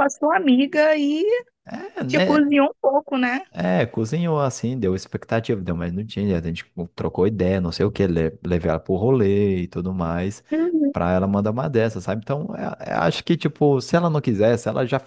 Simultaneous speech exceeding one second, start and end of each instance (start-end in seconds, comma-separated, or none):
none